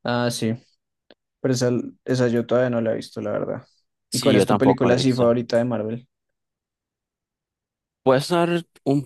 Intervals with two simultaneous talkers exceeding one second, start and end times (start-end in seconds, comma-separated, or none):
4.1-5.3